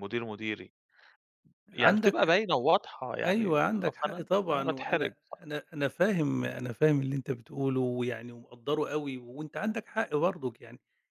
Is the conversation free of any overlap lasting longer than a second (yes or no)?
no